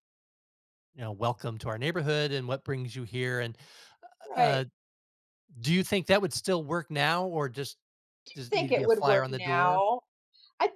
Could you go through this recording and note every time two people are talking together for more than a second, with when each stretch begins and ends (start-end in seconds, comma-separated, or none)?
8.3-9.8